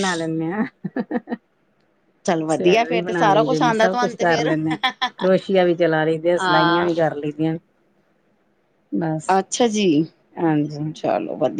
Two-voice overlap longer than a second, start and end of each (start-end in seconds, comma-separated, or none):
2.5-4.5